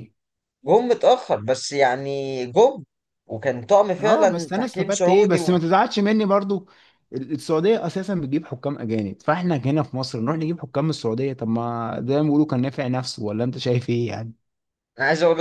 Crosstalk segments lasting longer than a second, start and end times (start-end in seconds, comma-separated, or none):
4.0-5.4